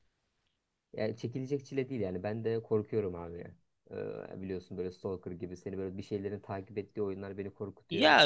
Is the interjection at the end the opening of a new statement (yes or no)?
yes